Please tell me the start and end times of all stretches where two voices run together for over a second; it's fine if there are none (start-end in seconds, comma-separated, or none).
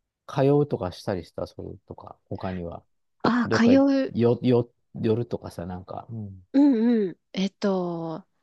none